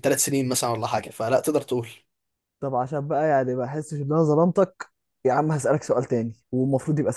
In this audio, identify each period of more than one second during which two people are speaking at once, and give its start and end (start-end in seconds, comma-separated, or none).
none